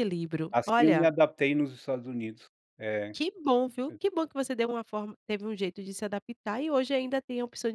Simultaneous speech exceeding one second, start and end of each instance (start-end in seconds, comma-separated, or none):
none